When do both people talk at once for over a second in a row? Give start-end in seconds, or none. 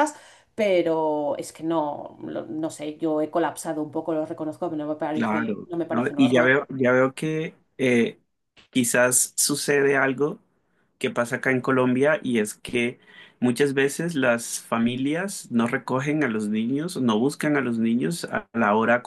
5.1-6.6